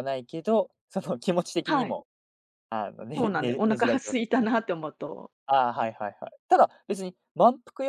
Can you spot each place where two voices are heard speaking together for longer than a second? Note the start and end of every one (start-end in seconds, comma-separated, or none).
3.1-4.5